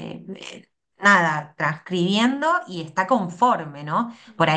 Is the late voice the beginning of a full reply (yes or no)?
no